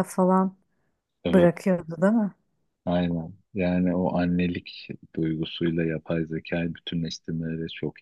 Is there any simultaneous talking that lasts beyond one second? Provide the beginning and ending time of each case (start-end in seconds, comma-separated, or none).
none